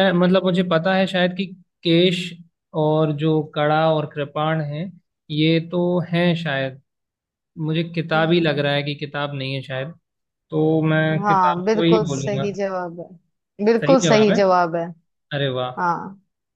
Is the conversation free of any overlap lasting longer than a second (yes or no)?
no